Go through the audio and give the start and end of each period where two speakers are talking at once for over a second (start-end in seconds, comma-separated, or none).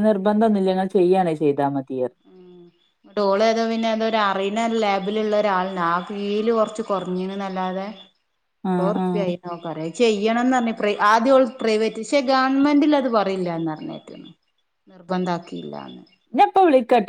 none